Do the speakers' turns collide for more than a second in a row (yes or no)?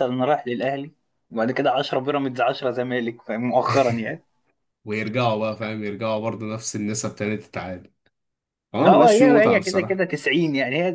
yes